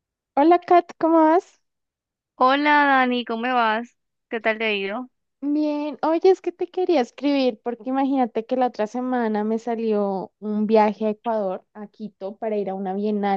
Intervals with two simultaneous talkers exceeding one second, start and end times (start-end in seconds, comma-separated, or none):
none